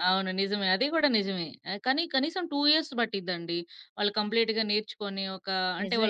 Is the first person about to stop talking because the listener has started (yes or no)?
yes